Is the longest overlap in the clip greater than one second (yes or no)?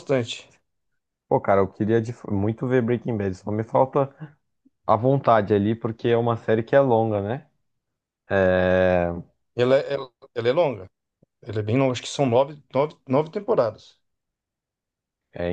no